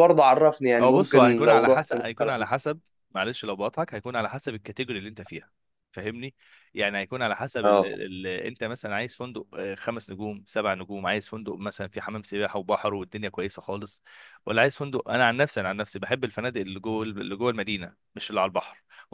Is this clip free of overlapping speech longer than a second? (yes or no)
no